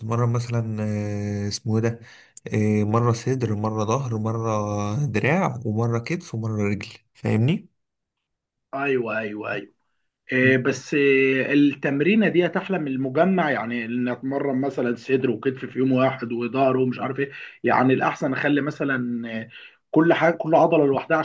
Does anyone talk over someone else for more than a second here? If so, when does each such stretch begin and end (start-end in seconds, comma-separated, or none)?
none